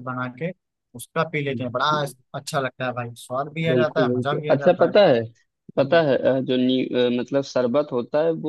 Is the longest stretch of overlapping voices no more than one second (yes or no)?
no